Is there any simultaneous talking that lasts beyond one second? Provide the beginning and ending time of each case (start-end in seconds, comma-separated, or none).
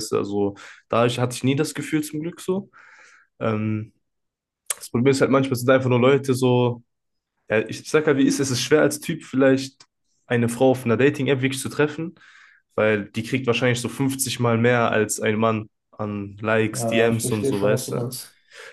16.7-18.1